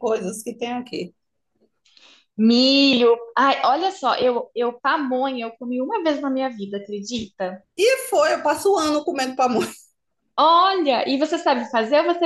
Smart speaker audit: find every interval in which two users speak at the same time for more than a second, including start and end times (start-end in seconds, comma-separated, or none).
none